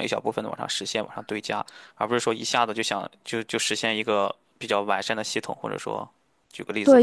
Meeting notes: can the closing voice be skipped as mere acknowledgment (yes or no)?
no